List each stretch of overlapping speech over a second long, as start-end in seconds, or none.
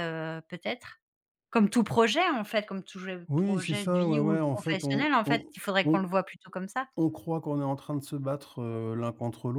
3.3-6.0